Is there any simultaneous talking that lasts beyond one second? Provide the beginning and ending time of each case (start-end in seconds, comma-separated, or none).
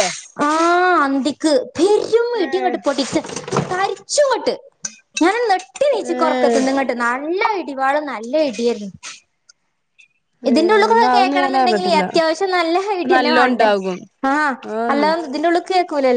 10.5-12.0